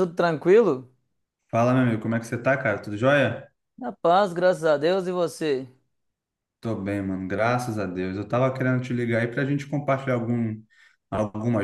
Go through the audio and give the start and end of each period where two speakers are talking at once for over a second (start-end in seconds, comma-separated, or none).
none